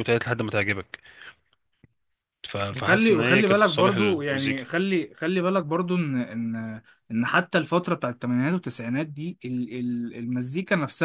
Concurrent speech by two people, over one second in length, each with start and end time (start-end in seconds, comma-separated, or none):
2.7-4.6